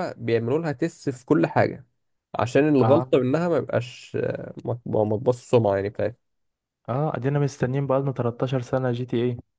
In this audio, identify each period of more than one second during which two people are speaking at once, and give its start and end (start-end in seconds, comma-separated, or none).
none